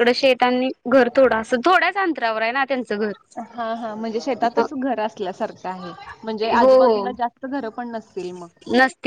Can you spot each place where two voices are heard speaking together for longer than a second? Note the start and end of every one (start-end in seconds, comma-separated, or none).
none